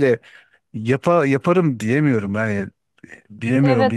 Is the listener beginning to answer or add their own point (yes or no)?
yes